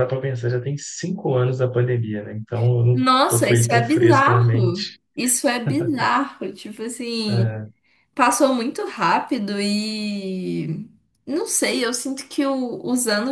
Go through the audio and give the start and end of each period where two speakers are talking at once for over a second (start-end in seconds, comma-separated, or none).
2.9-5.0